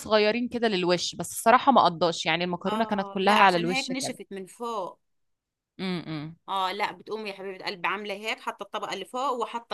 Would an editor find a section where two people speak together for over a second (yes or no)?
yes